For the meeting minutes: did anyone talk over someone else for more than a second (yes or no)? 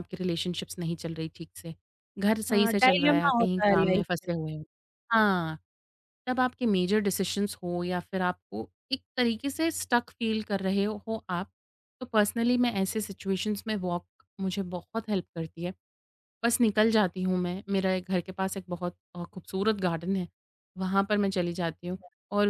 yes